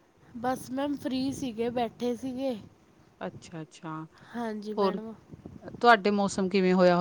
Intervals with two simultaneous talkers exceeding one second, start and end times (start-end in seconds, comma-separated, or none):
none